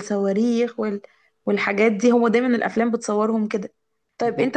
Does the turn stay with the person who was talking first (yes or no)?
yes